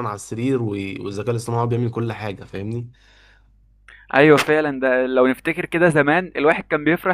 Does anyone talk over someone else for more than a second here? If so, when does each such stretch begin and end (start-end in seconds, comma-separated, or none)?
none